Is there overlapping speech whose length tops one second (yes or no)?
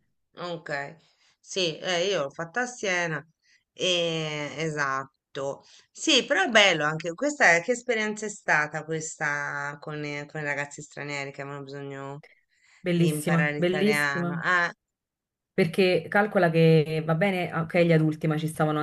yes